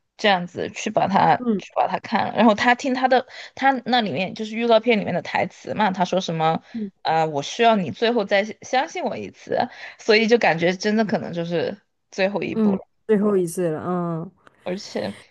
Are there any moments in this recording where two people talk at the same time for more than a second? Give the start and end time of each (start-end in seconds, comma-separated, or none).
none